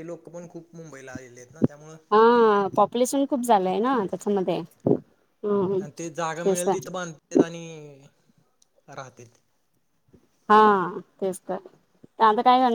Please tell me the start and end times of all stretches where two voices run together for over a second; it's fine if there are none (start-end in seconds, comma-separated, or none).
none